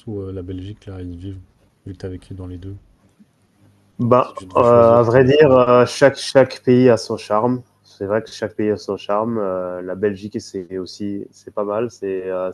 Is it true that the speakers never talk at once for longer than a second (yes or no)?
no